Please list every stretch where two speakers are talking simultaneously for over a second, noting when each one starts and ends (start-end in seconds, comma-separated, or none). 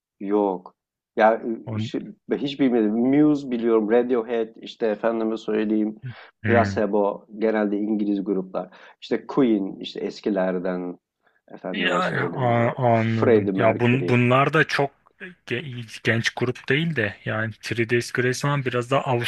11.7-14.2